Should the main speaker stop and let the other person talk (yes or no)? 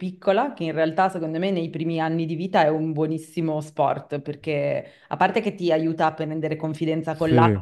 no